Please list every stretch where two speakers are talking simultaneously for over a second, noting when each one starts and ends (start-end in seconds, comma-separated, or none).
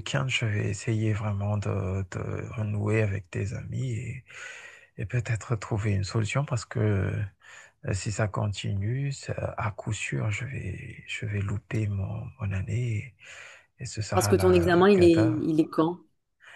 14.1-15.4